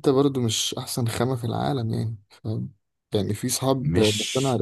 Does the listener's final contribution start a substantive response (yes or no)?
no